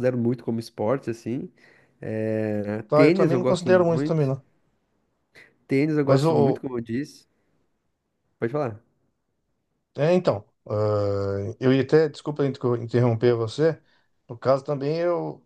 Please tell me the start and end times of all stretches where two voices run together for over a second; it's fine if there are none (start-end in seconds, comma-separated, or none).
2.9-4.3